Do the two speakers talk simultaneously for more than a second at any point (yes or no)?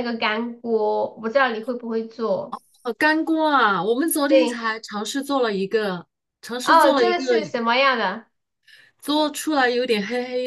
no